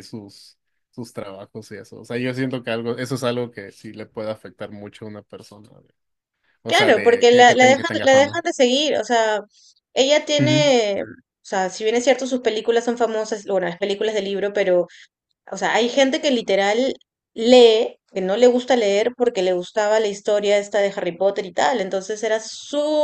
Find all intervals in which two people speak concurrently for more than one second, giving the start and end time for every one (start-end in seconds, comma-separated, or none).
6.7-8.4